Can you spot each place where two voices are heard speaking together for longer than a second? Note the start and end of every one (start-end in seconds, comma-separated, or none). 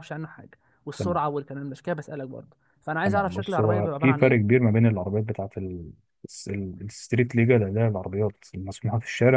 3.0-4.6